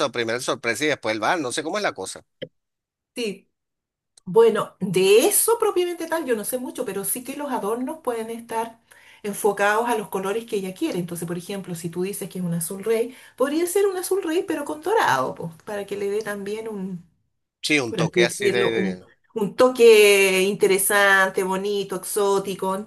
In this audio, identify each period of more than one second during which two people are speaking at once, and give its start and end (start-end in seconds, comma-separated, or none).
17.9-19.1